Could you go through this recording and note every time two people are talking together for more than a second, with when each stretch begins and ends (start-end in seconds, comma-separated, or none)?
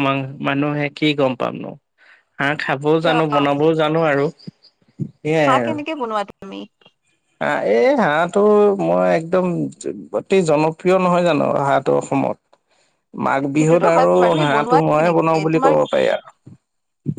13.6-15.7